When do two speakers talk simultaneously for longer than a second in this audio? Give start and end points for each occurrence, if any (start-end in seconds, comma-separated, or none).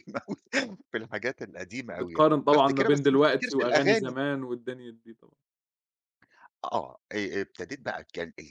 2.0-4.2